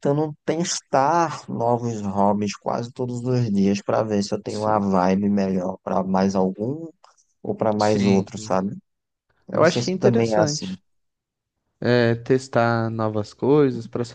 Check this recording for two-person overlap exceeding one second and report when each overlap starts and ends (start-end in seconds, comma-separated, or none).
9.5-10.8